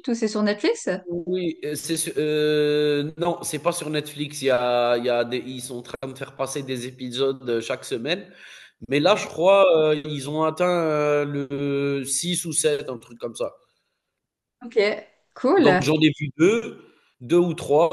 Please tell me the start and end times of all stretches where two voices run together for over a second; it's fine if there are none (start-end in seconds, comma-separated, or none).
none